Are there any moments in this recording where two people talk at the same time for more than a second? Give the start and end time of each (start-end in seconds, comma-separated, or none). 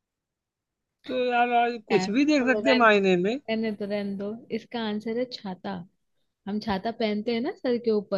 1.9-3.4